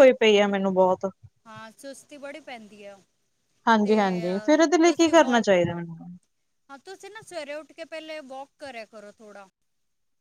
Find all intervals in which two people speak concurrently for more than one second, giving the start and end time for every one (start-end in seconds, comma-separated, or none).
none